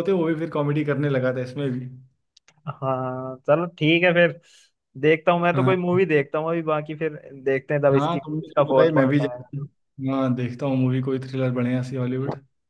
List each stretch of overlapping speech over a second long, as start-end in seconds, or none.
7.9-9.6